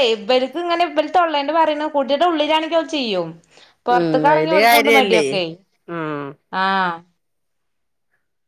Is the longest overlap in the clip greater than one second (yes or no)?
yes